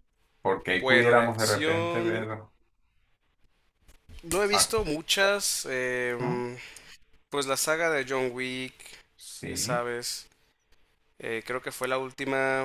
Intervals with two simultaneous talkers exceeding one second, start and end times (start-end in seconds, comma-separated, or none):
0.7-2.2